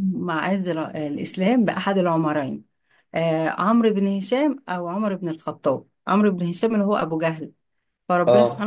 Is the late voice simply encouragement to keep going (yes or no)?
yes